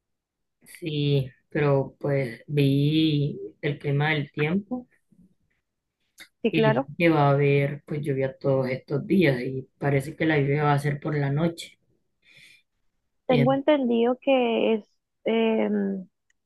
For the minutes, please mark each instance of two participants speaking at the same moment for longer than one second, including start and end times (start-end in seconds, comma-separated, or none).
none